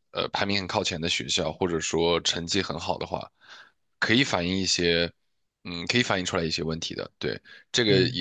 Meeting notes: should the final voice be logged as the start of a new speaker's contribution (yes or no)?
no